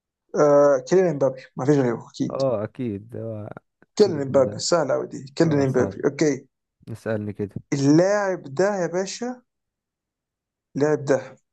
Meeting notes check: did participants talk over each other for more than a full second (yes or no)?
no